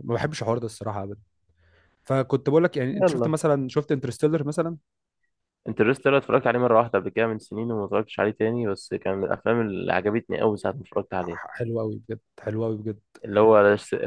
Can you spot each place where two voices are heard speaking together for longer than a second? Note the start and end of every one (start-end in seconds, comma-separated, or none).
none